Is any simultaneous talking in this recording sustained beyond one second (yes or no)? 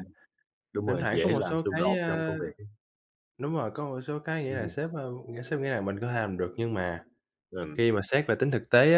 yes